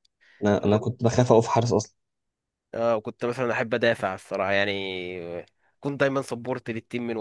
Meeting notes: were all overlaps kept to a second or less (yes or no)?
yes